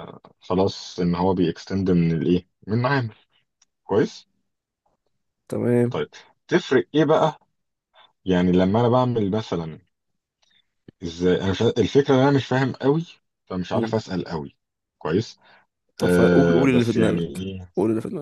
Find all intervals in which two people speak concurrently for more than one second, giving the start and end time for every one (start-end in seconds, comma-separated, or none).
16.0-17.7